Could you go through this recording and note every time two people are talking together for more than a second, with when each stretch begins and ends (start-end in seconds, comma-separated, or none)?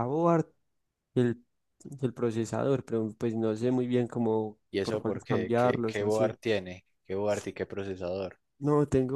4.7-6.3